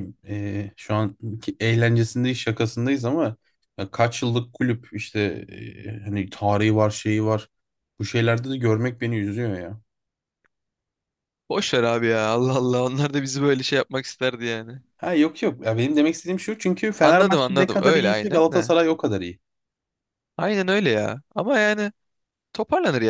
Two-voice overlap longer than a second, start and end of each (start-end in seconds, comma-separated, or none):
17.0-18.7